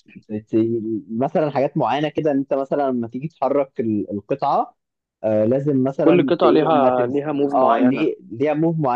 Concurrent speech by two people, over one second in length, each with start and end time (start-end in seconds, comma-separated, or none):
6.0-8.1